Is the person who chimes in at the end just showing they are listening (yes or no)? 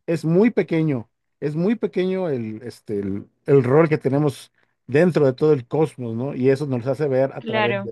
yes